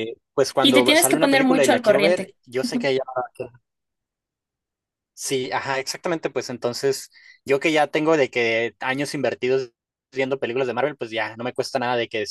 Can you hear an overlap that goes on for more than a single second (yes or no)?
yes